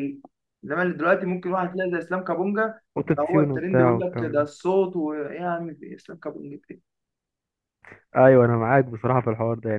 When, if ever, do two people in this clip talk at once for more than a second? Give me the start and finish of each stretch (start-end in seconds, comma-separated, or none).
3.0-4.5